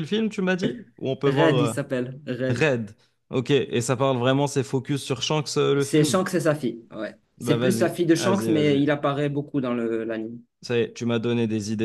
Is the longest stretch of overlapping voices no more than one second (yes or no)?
no